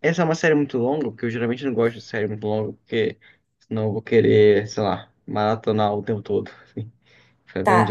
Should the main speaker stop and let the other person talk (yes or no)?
yes